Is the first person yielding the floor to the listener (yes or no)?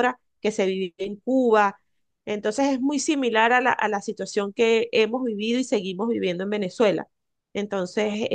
no